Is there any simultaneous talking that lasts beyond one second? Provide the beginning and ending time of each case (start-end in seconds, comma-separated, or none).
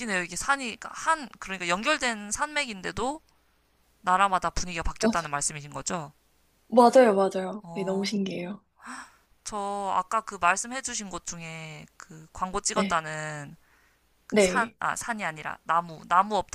none